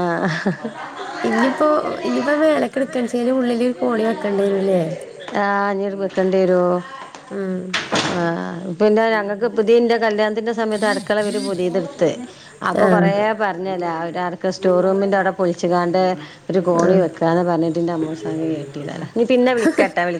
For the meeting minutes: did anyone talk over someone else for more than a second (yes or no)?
no